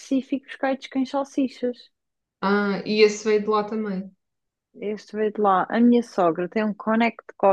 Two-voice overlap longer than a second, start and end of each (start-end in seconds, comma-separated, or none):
none